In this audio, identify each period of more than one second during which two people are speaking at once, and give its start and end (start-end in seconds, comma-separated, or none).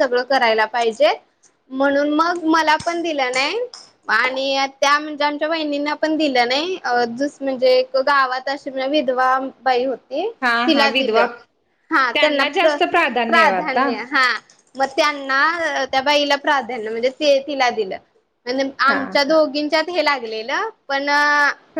12.6-13.8